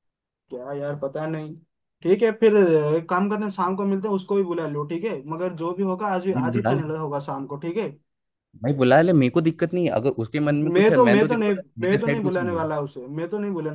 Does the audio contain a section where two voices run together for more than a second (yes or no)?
yes